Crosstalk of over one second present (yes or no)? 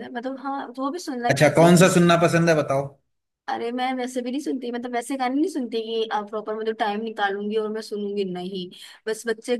no